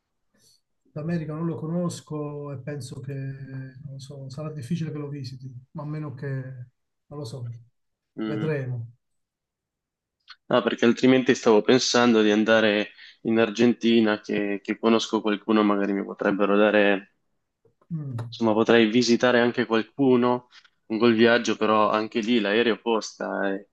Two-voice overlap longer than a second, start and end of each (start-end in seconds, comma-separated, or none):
none